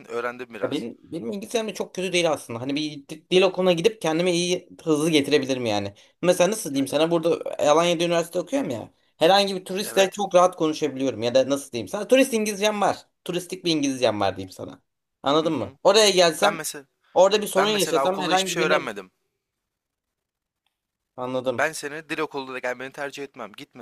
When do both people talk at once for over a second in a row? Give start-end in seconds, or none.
17.6-18.8